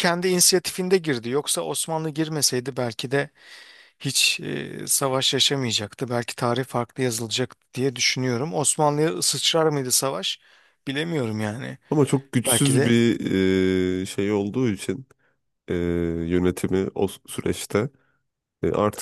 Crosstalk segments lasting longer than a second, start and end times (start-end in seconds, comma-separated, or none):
none